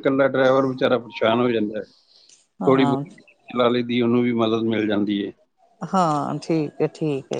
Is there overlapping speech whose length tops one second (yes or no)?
no